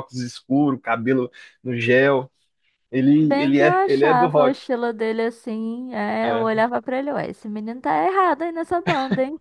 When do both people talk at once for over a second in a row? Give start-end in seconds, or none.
3.2-4.6